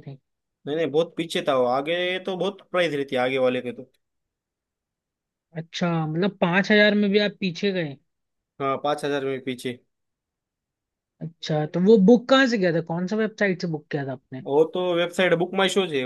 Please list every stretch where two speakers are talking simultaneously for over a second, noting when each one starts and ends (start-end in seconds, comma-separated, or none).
none